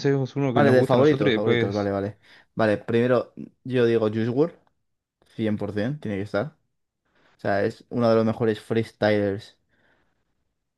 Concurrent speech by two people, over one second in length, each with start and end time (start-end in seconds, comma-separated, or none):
0.5-1.9